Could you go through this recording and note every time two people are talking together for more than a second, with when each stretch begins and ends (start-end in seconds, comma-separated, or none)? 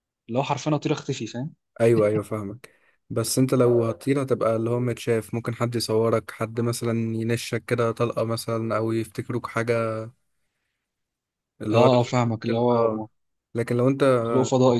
11.7-13.0